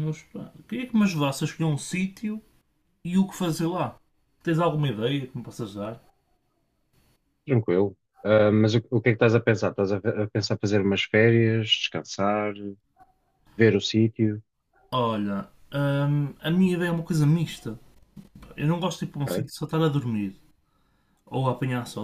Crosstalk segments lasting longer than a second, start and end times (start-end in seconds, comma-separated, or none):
none